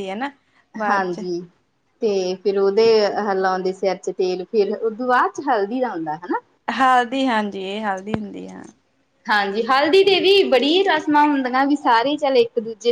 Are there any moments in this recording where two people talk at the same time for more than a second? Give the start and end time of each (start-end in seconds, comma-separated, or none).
none